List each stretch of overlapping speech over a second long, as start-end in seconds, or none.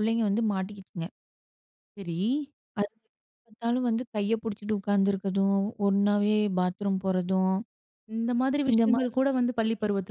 none